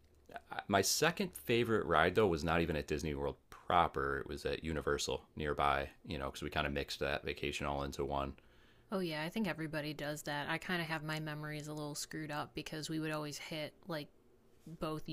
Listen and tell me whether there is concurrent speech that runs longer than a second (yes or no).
no